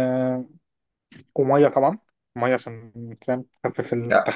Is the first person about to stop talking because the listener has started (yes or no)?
yes